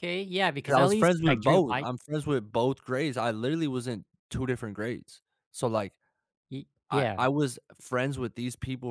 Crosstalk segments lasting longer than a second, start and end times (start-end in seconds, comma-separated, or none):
0.7-1.9